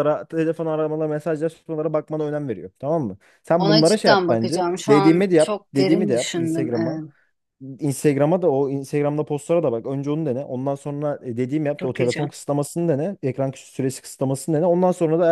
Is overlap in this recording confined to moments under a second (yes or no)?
no